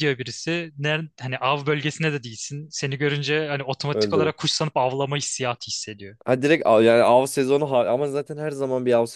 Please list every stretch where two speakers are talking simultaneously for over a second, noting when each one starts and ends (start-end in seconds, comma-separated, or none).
none